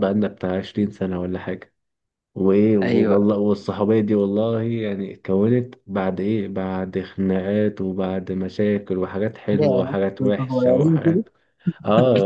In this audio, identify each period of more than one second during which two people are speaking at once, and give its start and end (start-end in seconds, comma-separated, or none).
9.6-11.2